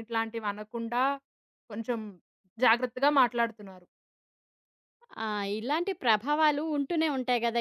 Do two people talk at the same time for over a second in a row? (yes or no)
no